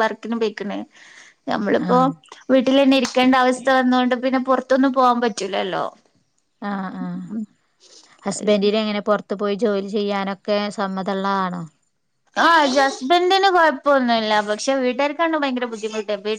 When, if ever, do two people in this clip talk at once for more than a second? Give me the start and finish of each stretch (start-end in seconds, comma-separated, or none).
none